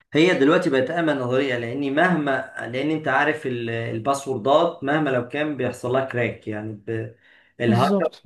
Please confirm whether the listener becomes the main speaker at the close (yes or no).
no